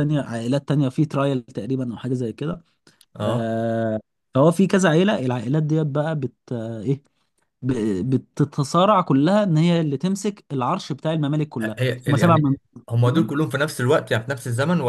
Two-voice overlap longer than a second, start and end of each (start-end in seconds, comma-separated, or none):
11.6-13.3